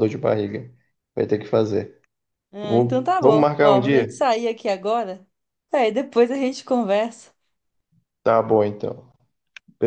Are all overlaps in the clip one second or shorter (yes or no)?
no